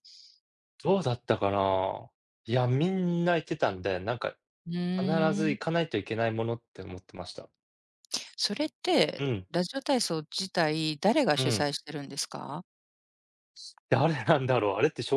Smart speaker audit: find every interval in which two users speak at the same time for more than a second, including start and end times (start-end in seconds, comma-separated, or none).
none